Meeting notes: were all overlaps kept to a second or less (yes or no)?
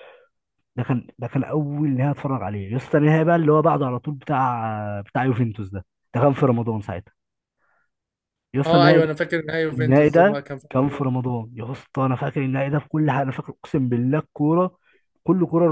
no